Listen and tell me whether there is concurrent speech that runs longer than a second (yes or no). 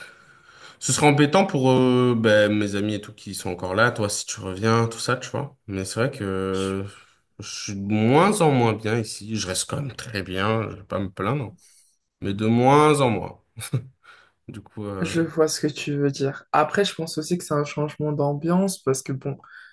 no